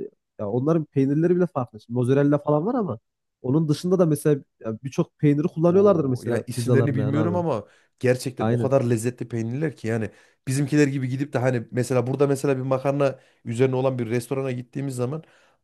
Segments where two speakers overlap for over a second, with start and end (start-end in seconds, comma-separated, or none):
5.7-7.4